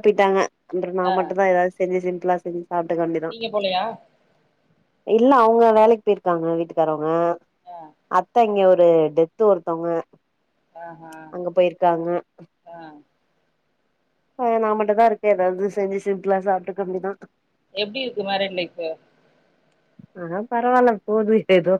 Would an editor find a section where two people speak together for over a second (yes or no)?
no